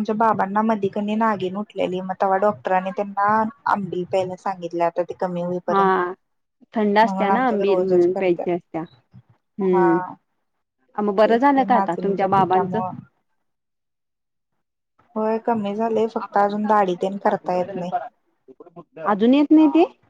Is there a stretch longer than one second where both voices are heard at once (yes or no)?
yes